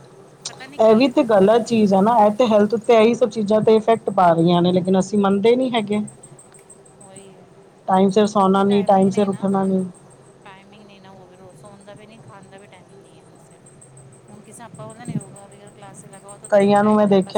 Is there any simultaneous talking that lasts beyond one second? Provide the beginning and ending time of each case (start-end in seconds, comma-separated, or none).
8.3-9.8